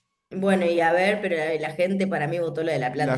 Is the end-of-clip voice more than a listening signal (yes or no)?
yes